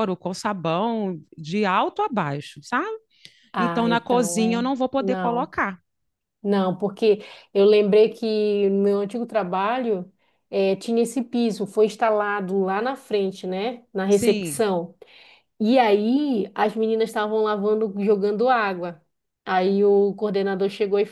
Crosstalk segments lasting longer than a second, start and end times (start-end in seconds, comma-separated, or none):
3.6-5.5